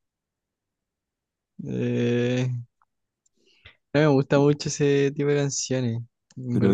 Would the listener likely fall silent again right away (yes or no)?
no